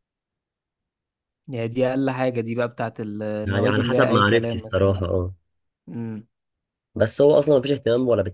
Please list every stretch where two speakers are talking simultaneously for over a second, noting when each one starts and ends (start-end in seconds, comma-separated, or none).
3.5-5.1